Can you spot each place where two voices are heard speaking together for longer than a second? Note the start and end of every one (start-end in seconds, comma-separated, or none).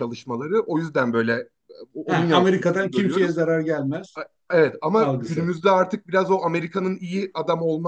2.1-3.4